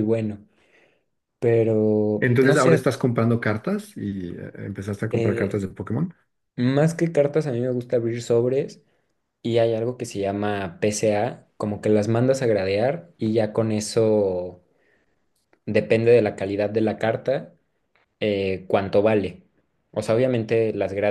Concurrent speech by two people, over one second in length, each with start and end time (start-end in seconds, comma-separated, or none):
none